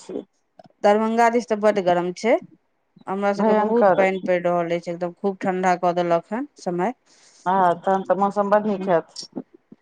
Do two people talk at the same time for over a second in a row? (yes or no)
no